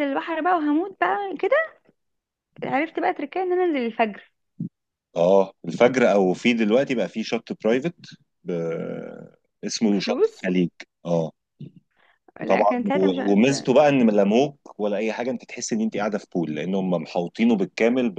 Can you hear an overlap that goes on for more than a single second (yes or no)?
yes